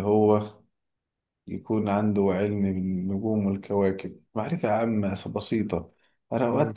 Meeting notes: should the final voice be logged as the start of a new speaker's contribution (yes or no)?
no